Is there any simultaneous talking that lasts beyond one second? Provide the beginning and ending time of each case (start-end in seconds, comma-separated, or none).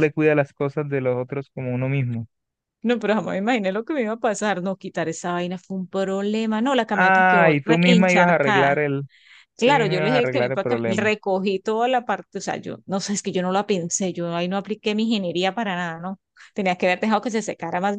6.9-8.8, 9.6-11.1